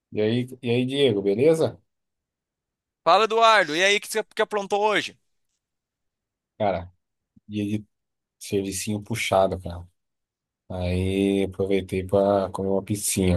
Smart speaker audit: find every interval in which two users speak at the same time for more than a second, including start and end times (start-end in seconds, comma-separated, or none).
none